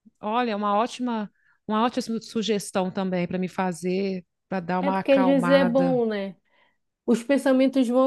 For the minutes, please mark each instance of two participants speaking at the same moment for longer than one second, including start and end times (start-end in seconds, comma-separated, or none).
4.8-6.0